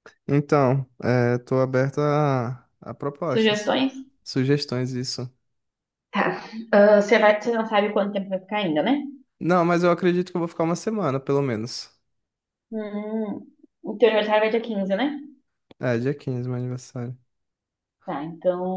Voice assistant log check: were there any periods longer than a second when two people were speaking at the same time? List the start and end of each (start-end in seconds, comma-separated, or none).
none